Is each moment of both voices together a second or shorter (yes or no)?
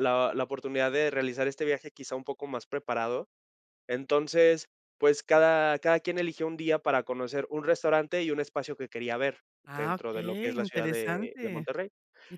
no